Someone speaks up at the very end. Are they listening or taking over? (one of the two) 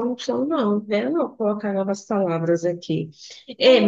listening